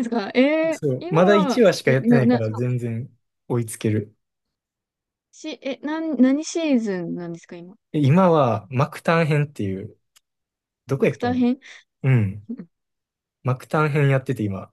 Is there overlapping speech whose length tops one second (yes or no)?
yes